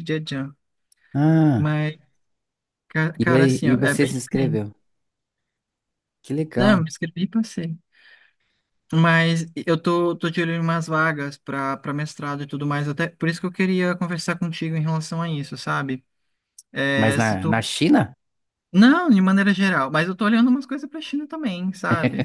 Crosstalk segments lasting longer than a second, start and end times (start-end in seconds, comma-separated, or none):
3.2-4.6